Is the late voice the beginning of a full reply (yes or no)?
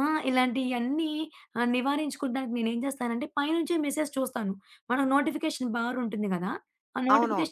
no